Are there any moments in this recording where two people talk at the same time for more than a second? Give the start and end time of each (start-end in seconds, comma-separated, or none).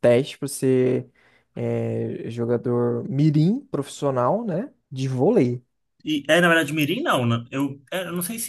none